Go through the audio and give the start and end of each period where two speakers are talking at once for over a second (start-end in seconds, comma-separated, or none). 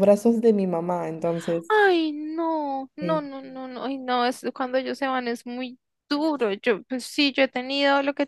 none